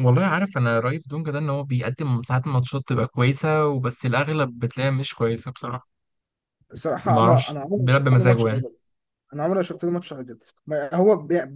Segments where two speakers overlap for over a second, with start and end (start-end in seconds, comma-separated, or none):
7.0-8.7